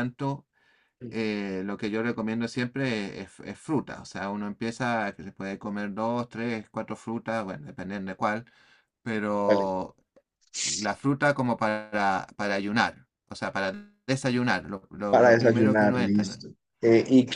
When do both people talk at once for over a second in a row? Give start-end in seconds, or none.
15.1-16.3